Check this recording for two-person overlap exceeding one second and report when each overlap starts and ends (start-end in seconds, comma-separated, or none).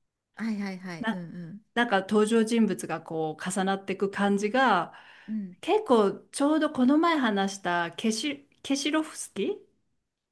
none